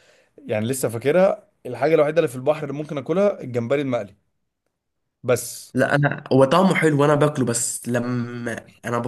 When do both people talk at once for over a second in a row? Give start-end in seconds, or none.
none